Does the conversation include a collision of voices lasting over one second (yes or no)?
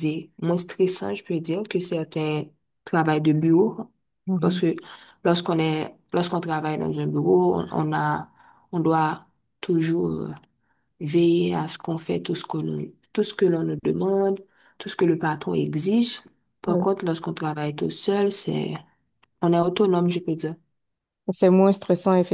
no